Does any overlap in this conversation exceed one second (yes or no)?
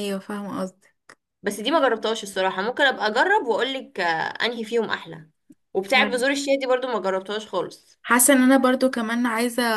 no